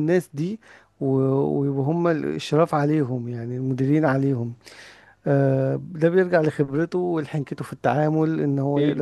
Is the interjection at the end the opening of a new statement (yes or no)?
no